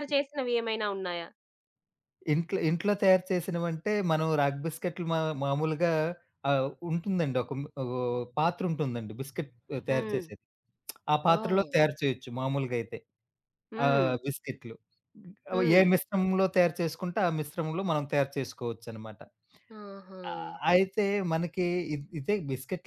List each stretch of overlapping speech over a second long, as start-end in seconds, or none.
none